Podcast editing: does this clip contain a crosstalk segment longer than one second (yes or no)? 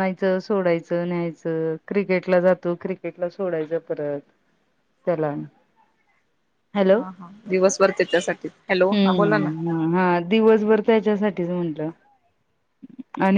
no